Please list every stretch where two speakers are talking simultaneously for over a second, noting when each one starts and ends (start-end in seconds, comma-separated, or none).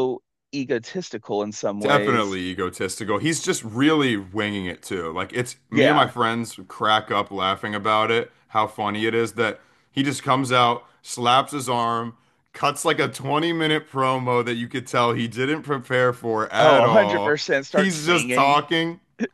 16.6-18.6